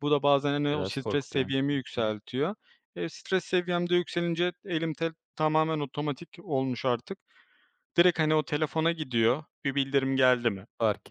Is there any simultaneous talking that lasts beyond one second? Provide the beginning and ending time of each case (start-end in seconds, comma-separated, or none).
0.7-2.1